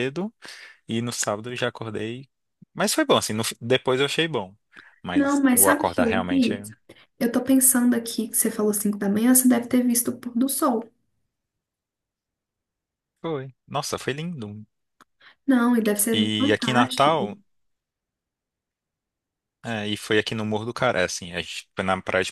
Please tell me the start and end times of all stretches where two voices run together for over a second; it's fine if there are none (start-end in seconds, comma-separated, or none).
5.1-6.5, 16.1-17.4